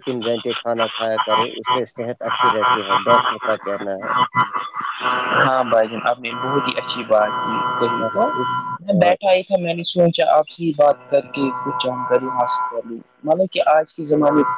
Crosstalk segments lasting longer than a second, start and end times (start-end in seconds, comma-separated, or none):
none